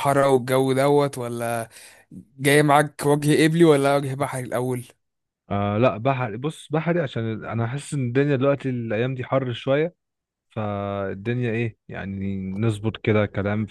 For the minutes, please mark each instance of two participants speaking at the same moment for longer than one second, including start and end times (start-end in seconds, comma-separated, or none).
none